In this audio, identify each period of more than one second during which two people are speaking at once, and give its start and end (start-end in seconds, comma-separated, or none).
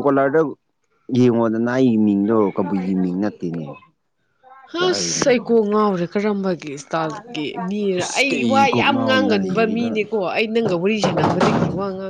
8.0-9.9